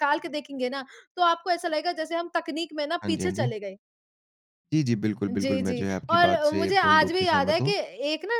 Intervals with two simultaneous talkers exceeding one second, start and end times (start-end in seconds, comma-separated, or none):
5.3-7.7